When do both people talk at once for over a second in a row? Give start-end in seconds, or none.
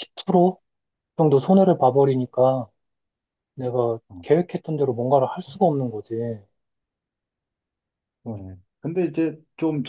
none